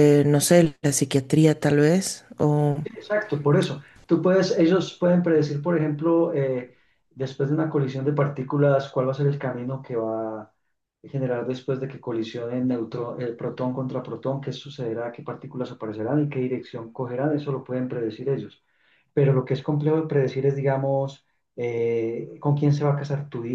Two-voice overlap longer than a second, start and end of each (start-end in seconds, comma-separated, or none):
none